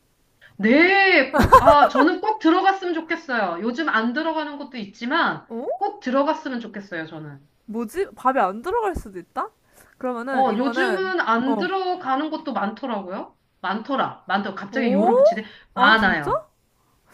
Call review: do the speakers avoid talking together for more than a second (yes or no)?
no